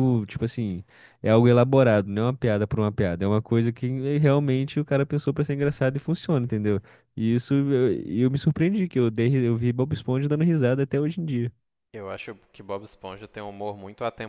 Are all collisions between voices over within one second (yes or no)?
yes